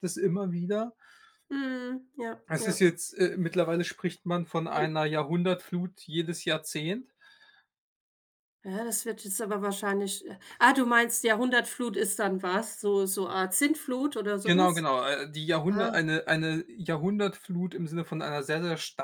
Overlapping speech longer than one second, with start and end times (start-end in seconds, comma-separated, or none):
none